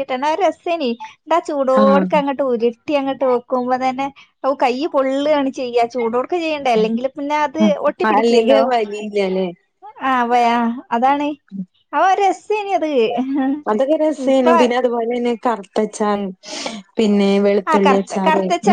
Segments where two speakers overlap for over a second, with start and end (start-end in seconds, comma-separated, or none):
none